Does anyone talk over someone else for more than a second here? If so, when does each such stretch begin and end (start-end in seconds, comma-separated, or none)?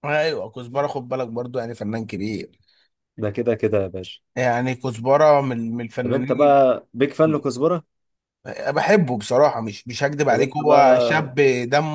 none